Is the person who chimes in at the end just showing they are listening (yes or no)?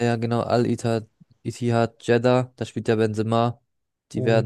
yes